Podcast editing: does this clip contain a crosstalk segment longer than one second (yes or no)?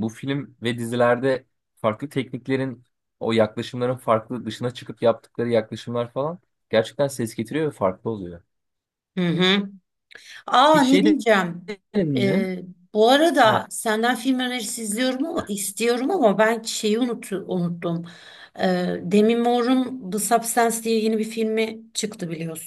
no